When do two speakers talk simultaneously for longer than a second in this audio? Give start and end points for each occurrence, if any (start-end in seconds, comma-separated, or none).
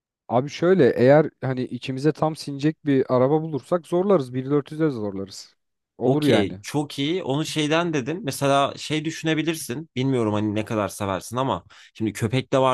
none